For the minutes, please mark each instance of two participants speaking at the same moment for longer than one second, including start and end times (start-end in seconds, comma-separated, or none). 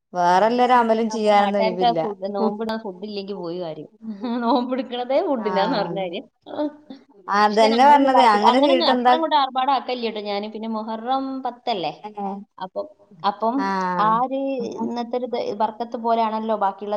7.5-9.1